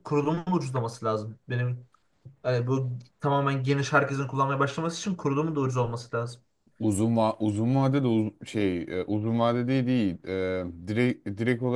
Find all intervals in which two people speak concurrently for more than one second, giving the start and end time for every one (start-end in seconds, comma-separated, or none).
none